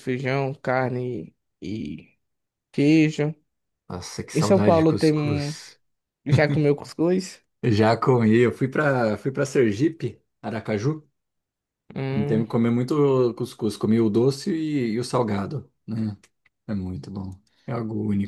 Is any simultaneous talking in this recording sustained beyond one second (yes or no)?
yes